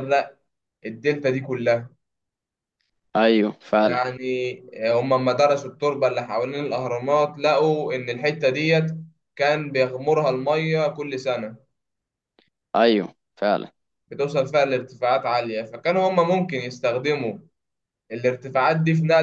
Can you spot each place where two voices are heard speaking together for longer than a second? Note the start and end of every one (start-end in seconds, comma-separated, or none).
none